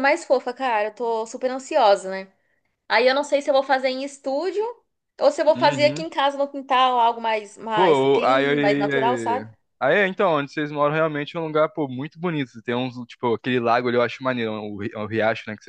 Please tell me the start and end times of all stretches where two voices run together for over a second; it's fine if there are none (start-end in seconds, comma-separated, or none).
7.7-9.5